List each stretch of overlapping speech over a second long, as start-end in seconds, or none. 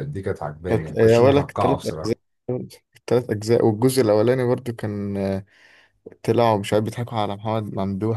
0.7-2.2